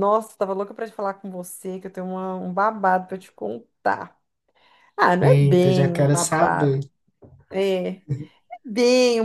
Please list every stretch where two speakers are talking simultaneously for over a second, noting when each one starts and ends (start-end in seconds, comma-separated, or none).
5.2-6.8